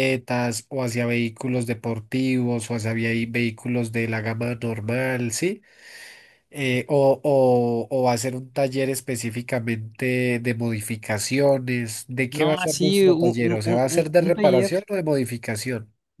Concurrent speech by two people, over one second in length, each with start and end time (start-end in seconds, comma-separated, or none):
12.3-14.7